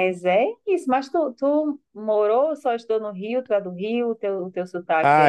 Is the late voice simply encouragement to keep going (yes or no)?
no